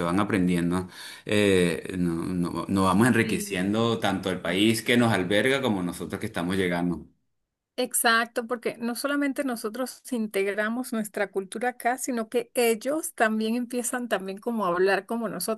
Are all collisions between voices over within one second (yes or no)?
yes